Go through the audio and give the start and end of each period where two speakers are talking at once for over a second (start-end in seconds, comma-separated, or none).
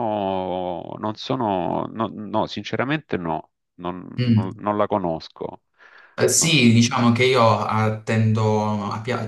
none